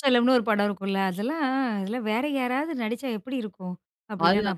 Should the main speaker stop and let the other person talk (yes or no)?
yes